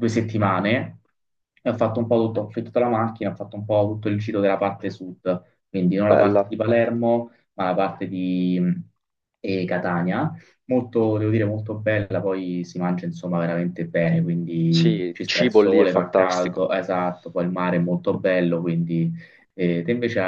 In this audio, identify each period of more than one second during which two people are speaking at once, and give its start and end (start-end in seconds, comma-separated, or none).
14.7-16.7